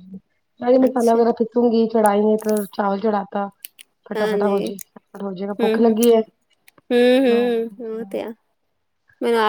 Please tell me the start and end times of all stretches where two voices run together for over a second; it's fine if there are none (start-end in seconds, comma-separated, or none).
none